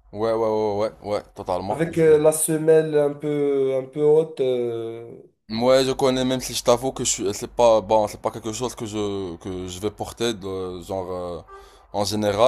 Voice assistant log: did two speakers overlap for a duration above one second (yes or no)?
no